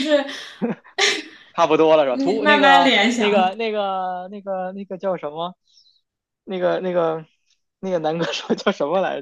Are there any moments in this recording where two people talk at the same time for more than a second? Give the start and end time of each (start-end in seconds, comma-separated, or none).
2.1-3.5